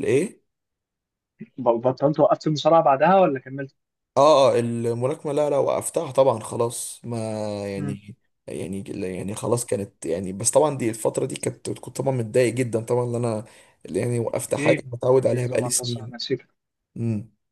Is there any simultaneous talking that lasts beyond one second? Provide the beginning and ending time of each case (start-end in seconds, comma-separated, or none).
14.5-16.1